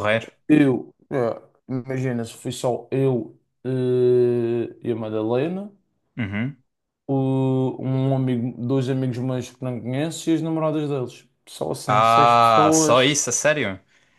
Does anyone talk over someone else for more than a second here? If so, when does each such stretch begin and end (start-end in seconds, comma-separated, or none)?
11.9-13.2